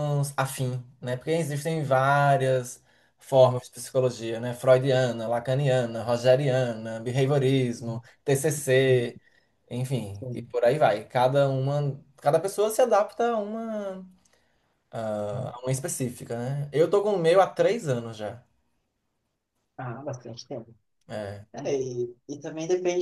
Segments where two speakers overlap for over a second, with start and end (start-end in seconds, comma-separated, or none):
none